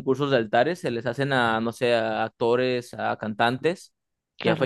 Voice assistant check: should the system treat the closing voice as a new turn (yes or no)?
no